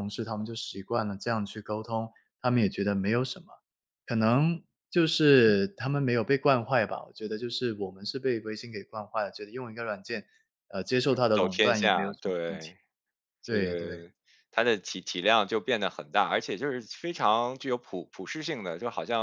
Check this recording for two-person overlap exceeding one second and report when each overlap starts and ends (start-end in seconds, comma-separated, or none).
11.3-12.7